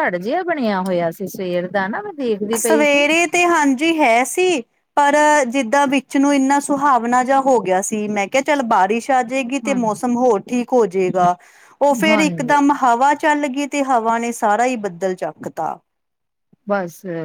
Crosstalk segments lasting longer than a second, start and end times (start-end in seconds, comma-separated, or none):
none